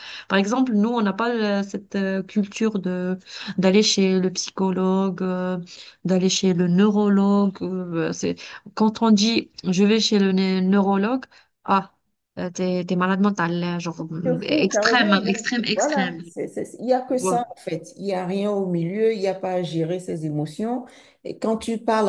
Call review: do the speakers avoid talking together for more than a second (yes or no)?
no